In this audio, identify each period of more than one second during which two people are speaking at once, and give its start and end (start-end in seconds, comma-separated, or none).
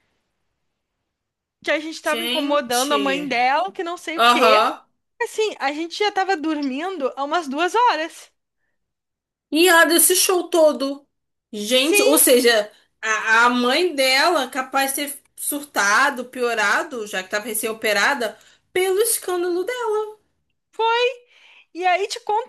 2.0-3.3